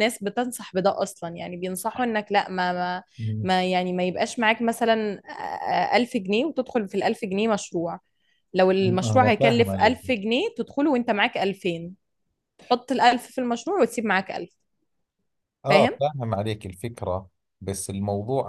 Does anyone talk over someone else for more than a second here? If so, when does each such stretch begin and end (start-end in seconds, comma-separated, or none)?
8.8-10.0